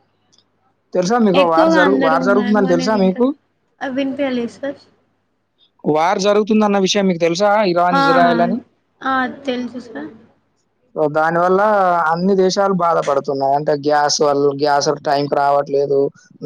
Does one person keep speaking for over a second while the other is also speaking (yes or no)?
yes